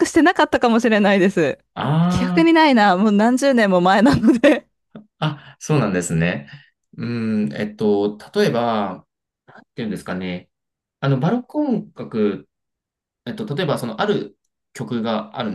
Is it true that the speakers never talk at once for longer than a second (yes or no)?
yes